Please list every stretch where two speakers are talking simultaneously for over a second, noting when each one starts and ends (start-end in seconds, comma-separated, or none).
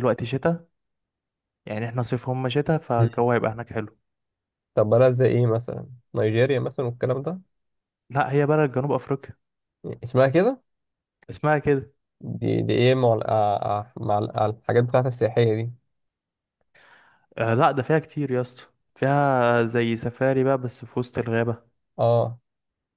none